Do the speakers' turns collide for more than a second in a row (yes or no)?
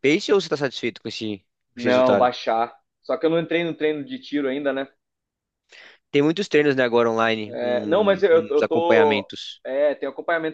yes